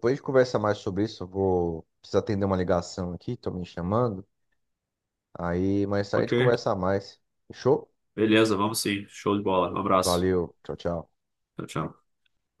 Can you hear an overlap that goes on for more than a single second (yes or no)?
no